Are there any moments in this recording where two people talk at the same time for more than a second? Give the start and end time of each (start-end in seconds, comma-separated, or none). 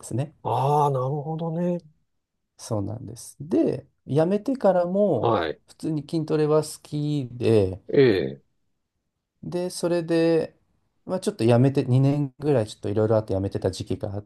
none